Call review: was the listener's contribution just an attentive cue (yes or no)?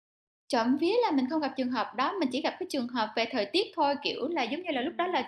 yes